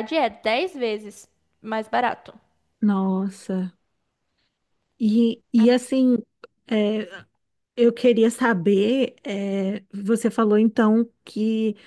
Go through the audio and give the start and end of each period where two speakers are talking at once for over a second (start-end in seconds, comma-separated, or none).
none